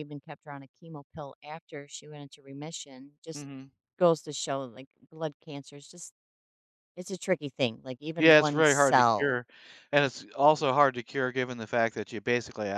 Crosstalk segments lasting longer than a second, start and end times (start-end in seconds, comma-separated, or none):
8.2-9.4